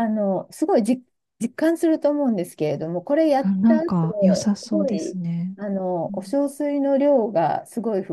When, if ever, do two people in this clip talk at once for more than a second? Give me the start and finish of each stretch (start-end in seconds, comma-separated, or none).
none